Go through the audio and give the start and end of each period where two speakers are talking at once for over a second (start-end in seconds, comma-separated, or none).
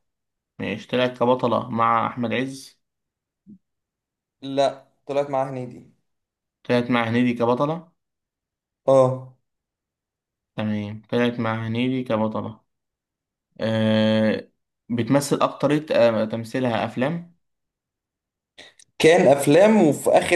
none